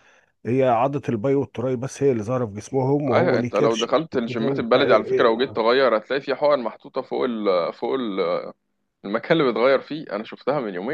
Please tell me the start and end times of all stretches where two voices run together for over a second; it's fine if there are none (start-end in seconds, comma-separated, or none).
3.1-5.3